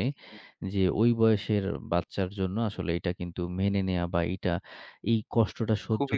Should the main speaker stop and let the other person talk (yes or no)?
no